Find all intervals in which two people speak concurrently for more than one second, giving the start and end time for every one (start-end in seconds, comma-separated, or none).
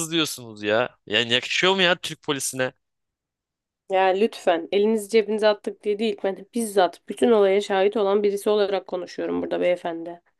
none